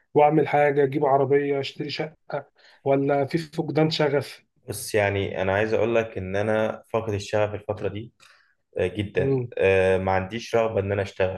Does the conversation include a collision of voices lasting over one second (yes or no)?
no